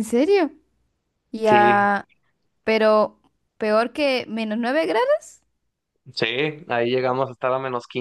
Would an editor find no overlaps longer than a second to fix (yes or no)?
yes